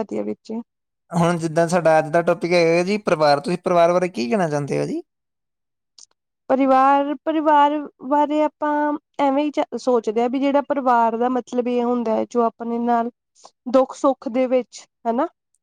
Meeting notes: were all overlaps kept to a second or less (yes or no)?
yes